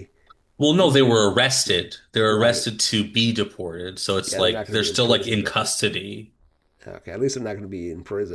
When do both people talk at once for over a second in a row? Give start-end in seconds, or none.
4.3-5.7